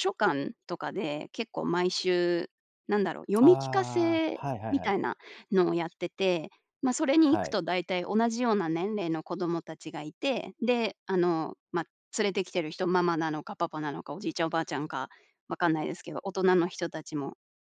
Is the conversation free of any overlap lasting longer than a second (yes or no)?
no